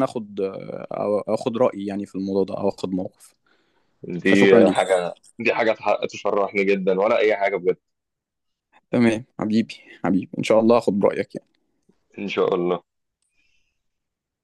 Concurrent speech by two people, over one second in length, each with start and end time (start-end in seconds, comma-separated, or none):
none